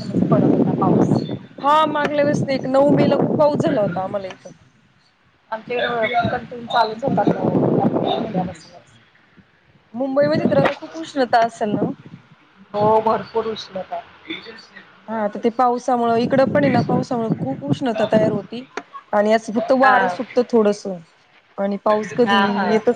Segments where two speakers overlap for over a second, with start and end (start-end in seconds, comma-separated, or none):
none